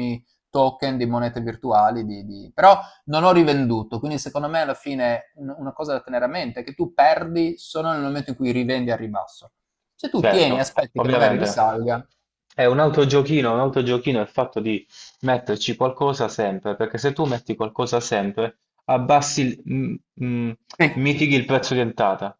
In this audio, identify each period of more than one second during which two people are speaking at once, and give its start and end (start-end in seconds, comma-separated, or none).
10.1-11.6